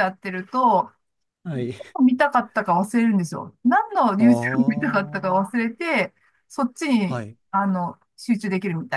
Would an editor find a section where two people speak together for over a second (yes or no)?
yes